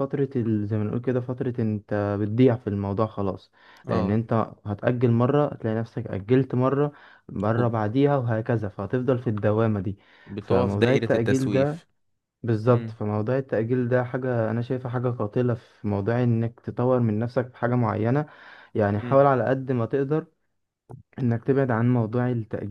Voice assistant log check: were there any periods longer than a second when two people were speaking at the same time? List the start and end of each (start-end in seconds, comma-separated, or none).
10.4-11.9